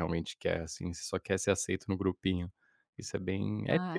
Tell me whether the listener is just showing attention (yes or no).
no